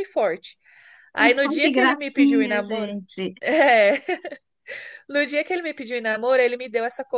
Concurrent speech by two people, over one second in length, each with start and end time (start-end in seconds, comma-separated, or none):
1.2-2.9